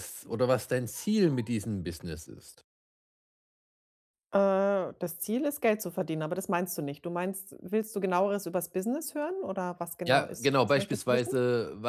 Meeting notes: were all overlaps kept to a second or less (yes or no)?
no